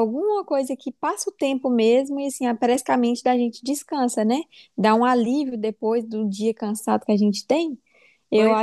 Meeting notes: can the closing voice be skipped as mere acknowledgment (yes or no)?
yes